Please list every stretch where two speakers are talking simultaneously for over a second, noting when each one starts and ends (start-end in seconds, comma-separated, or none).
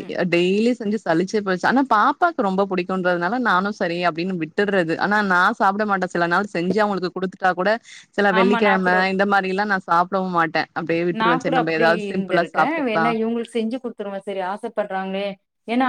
none